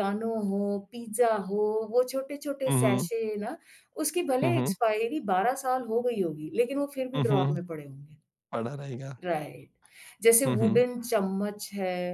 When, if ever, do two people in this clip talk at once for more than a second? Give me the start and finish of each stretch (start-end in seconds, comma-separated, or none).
none